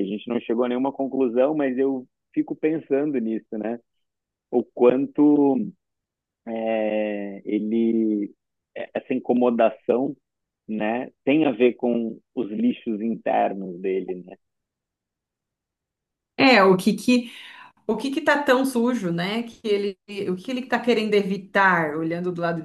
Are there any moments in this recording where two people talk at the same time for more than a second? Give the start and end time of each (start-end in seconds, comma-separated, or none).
none